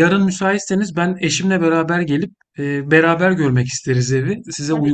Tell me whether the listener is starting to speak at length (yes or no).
yes